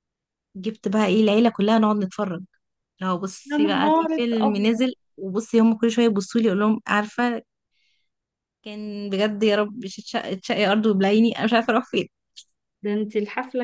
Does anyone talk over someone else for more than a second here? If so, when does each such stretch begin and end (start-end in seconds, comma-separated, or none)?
3.5-4.8